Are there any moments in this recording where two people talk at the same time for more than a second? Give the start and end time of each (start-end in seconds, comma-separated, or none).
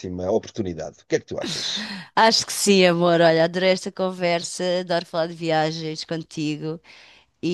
none